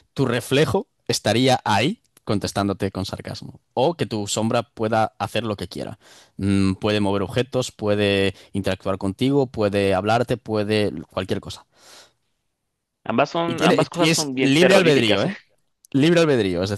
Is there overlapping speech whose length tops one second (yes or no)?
yes